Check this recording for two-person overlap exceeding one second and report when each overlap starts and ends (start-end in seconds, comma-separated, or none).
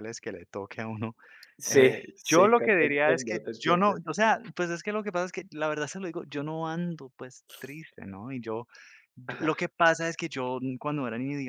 1.7-4.0